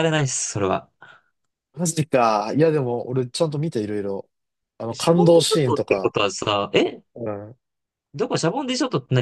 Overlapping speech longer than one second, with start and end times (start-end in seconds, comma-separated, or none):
4.9-6.1